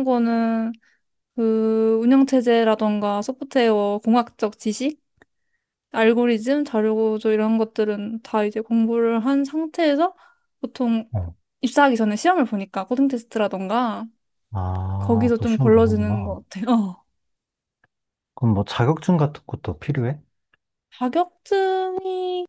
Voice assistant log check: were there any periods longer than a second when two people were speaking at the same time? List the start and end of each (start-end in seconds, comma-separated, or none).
15.0-16.4